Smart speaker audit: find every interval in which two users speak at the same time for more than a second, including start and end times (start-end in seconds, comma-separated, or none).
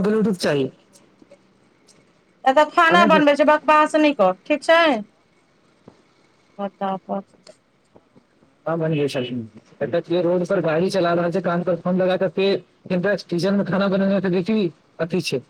none